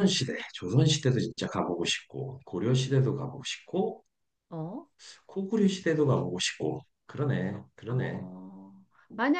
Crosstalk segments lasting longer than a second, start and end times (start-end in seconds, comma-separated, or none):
none